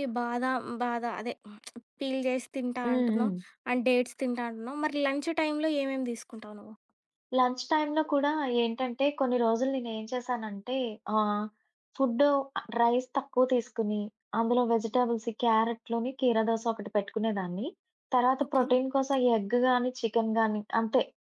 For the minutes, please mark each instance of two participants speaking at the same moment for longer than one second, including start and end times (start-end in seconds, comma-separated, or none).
none